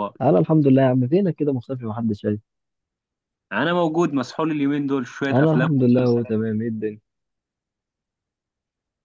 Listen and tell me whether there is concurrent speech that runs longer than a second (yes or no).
yes